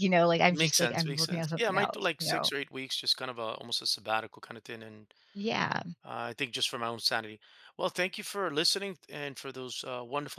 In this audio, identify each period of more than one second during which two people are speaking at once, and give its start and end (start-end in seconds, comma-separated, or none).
0.5-2.5